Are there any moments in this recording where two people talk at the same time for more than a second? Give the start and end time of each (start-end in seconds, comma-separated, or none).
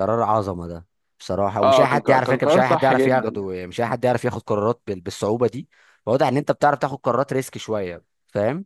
1.6-3.5